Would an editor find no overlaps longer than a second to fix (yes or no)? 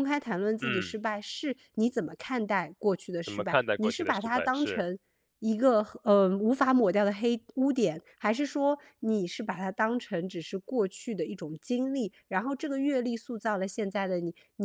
no